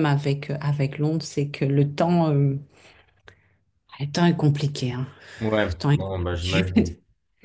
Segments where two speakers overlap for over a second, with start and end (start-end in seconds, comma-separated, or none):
5.7-6.9